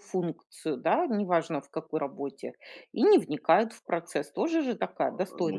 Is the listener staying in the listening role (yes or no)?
no